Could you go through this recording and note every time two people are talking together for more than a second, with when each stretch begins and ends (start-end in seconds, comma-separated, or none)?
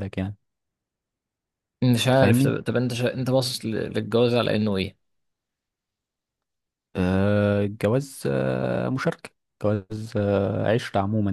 none